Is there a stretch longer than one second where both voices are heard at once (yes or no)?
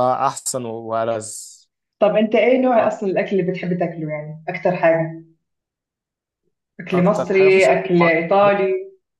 yes